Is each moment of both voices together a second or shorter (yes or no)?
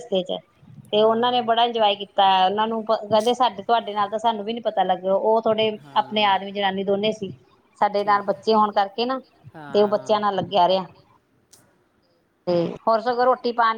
yes